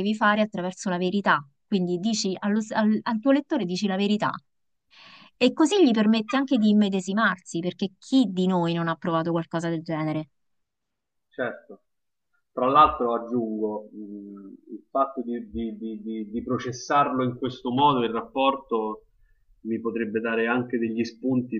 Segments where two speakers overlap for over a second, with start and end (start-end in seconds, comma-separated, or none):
none